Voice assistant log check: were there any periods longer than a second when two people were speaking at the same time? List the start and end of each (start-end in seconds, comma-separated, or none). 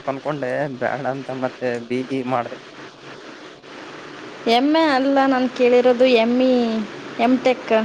none